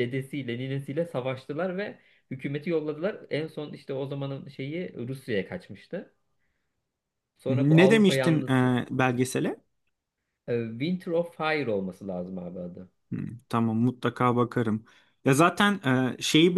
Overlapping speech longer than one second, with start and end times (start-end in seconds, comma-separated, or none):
7.5-8.8